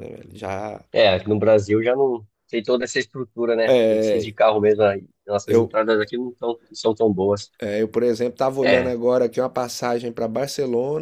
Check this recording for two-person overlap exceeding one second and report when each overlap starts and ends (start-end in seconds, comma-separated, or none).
none